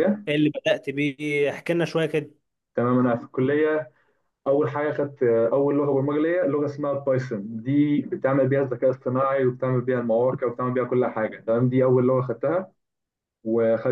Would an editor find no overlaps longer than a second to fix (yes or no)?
yes